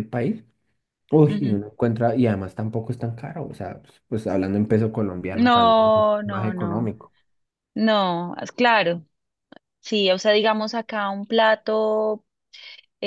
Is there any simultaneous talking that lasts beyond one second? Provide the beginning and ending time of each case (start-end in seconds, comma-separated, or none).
5.3-6.9